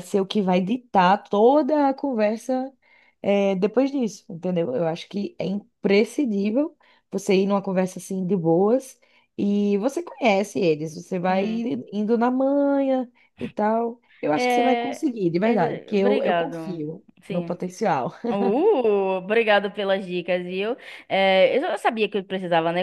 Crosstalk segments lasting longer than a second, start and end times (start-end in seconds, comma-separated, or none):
14.3-17.6